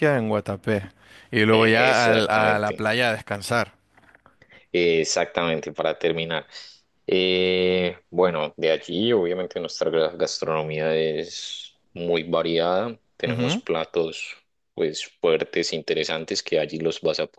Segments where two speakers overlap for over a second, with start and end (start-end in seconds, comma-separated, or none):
1.5-2.9